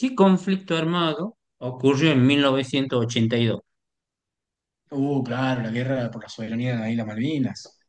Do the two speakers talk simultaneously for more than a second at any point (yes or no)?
no